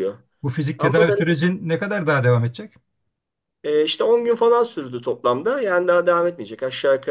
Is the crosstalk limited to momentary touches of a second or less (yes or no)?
yes